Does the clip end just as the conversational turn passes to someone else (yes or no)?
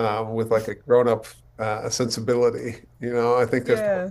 no